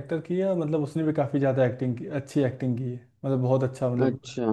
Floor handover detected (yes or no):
no